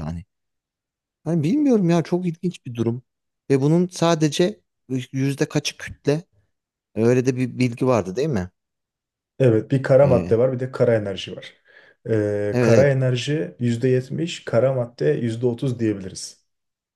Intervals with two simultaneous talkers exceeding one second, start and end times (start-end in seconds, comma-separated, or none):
none